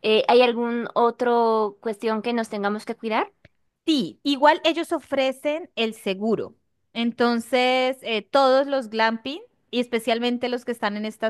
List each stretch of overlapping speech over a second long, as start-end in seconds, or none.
none